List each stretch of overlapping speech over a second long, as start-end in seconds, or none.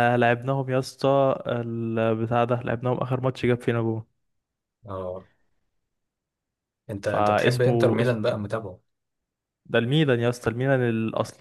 7.0-8.2